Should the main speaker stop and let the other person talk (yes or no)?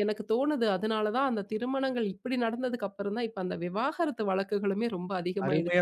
yes